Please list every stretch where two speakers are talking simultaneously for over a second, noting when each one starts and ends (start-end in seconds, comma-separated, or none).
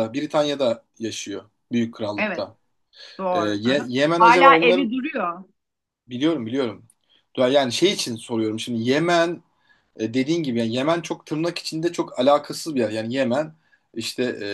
3.3-4.9